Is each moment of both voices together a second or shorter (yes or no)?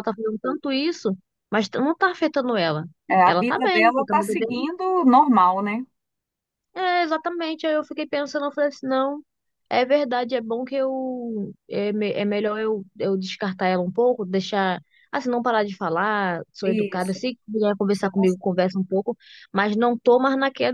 no